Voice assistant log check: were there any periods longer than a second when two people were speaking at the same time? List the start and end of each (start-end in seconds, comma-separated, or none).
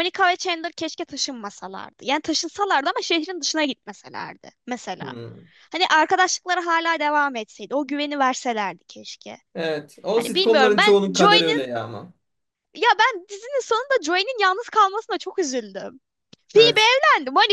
10.1-11.6